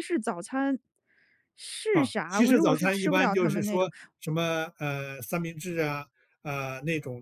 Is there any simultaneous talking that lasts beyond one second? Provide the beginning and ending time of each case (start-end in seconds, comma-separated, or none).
1.9-3.9